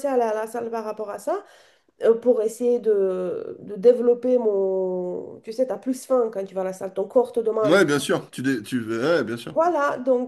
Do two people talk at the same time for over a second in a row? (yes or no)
no